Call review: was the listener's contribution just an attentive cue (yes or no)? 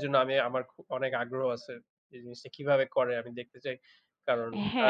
no